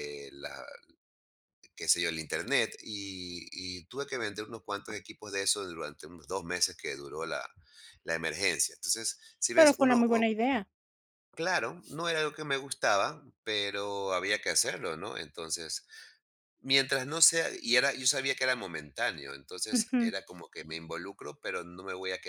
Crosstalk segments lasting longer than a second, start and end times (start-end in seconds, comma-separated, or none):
none